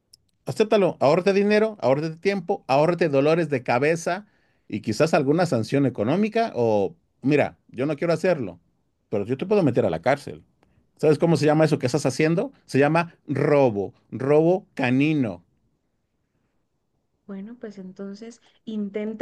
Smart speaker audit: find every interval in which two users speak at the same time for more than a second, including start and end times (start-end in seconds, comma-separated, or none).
none